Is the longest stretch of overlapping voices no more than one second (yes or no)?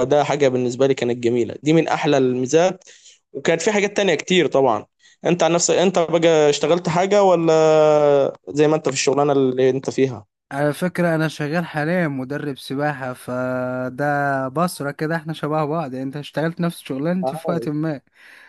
yes